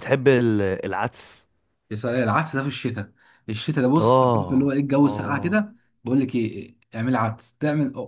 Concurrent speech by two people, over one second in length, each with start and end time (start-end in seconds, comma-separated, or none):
4.0-5.7